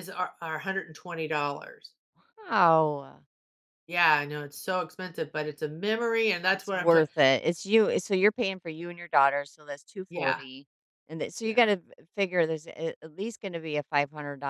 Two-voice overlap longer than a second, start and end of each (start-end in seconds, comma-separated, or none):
none